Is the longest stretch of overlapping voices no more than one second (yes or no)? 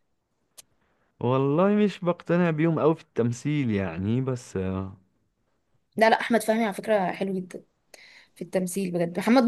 yes